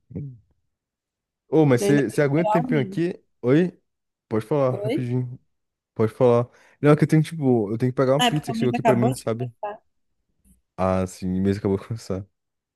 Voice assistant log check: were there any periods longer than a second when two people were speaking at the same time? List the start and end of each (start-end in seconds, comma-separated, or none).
1.8-3.0, 8.2-9.5